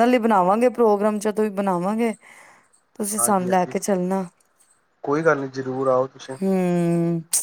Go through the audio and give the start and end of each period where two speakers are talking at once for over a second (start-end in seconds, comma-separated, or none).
none